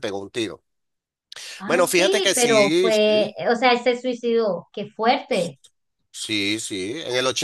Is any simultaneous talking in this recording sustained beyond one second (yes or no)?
yes